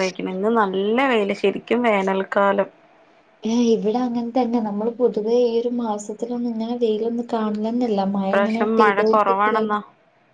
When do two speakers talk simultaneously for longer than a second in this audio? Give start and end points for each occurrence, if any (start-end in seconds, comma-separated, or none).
8.2-9.7